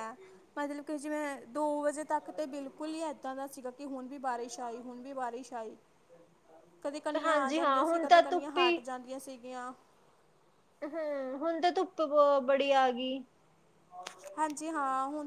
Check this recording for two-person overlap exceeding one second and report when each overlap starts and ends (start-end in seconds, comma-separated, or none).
7.2-8.8